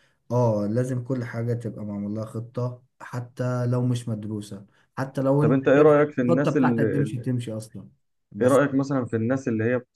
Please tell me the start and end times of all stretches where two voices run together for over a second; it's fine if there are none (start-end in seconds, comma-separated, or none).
5.4-7.2